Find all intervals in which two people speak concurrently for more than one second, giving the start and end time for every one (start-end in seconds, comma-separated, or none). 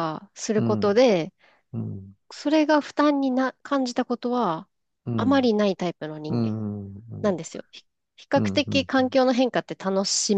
none